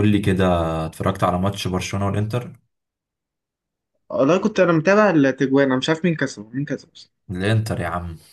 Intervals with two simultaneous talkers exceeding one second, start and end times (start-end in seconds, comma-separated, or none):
none